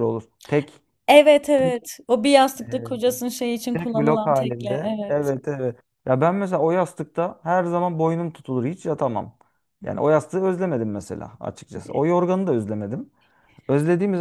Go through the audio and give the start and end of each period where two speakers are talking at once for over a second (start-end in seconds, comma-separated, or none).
3.7-5.3